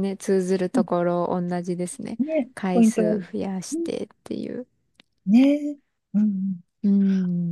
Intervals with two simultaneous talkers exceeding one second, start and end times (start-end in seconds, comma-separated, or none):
2.5-3.9